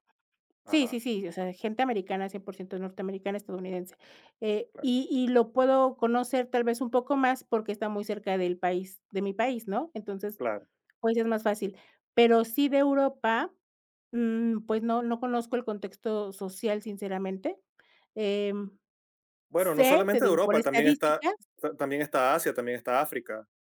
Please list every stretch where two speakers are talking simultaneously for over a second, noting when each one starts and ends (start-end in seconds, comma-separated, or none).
19.6-21.2